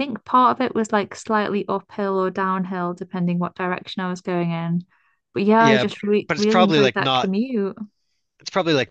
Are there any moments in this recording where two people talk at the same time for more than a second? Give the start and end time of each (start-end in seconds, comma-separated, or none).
5.6-7.3